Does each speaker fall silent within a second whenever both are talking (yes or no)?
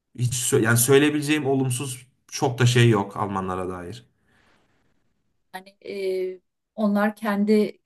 yes